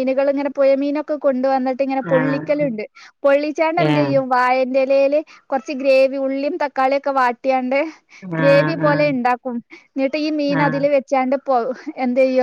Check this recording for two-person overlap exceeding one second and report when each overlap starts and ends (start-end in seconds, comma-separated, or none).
none